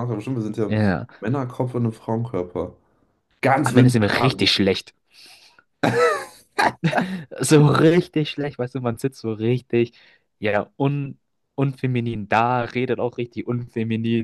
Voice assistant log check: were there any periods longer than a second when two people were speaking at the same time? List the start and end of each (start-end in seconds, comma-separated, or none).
none